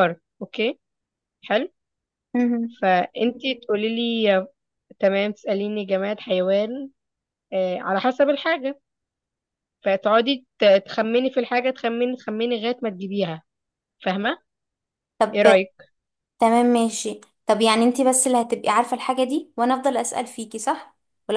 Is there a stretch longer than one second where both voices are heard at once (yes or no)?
no